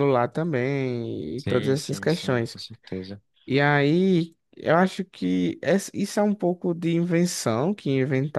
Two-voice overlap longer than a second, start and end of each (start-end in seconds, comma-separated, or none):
1.4-2.6